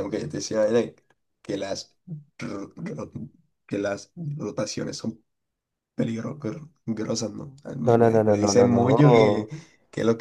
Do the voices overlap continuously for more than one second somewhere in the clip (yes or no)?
yes